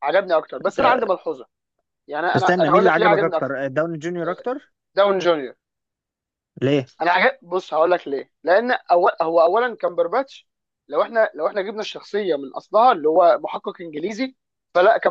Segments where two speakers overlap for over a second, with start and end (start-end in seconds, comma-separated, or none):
2.4-3.6